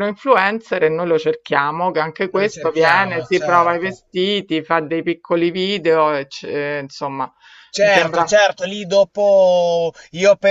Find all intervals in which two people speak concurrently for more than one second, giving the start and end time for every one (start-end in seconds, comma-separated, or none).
2.2-4.0